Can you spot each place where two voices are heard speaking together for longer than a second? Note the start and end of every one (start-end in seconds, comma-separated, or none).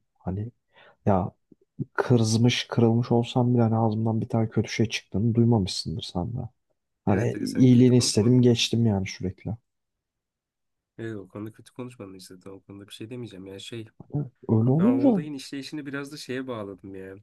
7.1-8.5